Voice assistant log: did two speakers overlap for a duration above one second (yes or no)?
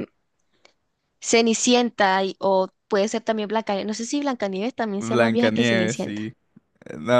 yes